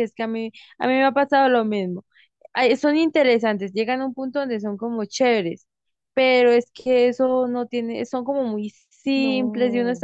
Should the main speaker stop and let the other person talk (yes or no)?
no